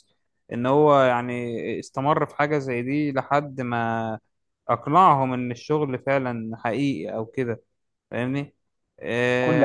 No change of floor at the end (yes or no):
no